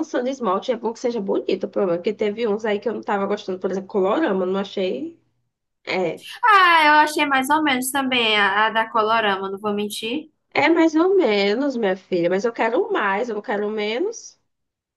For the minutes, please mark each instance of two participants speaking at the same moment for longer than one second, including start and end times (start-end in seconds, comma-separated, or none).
none